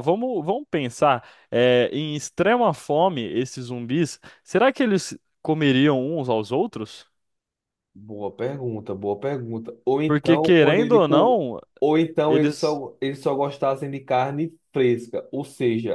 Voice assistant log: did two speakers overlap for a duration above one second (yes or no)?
yes